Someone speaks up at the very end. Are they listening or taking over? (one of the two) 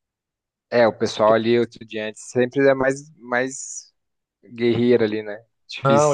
taking over